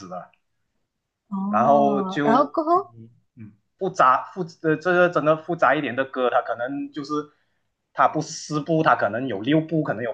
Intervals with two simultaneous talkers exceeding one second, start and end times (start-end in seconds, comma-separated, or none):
1.5-3.0